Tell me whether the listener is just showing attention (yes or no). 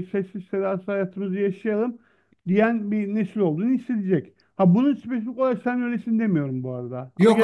no